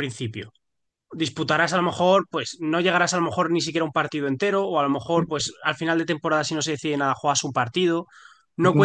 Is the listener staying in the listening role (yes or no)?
no